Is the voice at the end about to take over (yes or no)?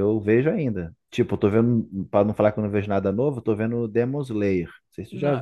yes